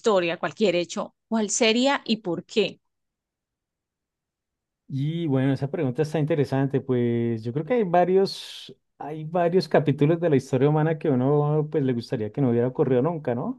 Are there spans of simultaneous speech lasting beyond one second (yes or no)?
no